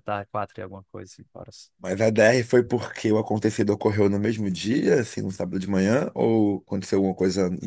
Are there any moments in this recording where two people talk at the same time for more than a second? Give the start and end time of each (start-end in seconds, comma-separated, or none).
none